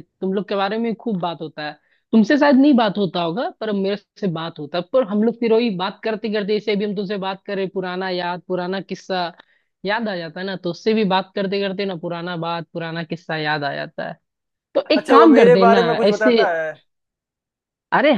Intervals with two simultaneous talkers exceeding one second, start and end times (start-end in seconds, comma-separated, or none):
14.9-16.4